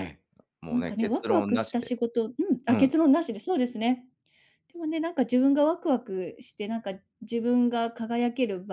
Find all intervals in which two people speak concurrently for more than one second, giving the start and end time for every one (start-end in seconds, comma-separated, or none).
0.7-1.9